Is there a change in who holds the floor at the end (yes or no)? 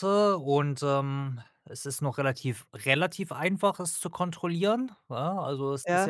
no